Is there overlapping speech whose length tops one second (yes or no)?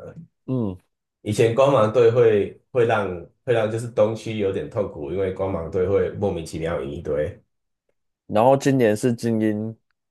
no